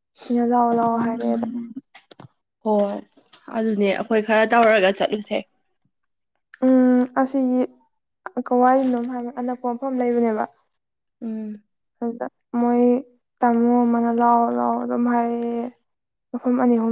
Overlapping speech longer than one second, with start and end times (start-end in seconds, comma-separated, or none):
none